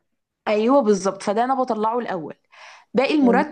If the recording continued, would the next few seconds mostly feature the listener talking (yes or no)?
no